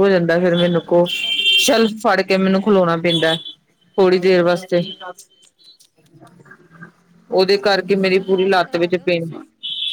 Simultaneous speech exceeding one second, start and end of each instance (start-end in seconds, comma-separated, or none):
7.6-9.3